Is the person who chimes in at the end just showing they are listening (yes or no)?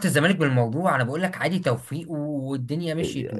no